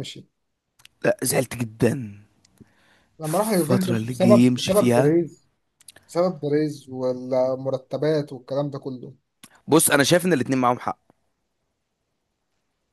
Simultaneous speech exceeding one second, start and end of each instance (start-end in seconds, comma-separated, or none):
3.2-5.2